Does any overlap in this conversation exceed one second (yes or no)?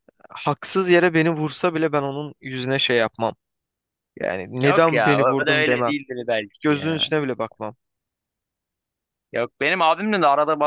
yes